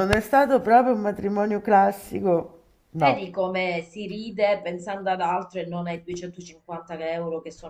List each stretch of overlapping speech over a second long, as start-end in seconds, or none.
none